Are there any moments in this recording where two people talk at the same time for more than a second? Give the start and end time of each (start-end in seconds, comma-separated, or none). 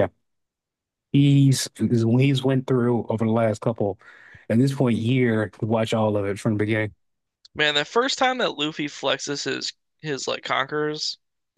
none